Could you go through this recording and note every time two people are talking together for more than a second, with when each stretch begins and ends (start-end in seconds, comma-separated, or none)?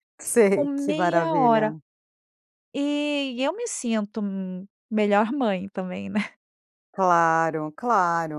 0.5-1.7